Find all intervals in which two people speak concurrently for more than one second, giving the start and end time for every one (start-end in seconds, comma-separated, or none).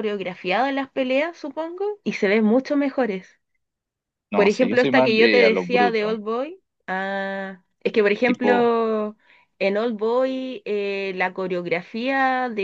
4.3-6.1